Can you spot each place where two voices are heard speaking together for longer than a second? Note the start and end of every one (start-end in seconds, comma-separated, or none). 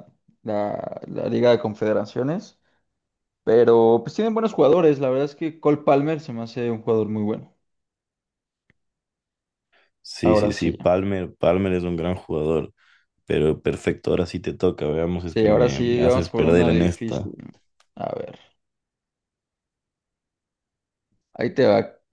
15.2-17.3